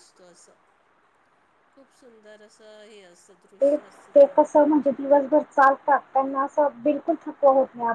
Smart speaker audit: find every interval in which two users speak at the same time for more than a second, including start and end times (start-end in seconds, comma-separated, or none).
none